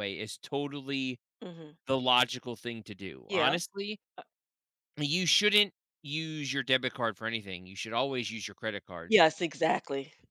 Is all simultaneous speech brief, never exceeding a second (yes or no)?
yes